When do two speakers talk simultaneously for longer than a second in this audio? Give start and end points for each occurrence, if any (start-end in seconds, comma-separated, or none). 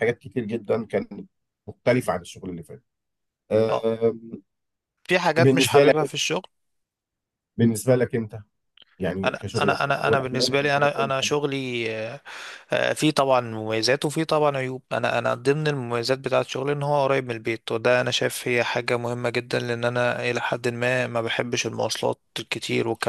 9.2-11.1